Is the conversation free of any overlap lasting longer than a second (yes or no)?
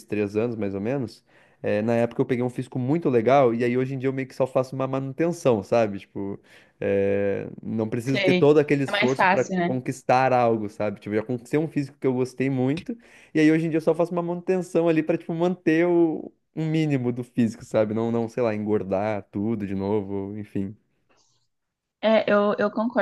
no